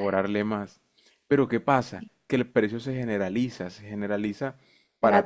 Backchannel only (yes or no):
yes